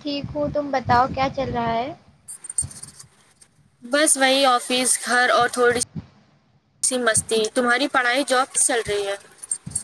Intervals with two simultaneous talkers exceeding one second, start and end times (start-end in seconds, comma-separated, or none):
none